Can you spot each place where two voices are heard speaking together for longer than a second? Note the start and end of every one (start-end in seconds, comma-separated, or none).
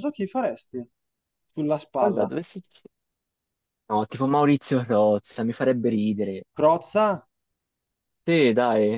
none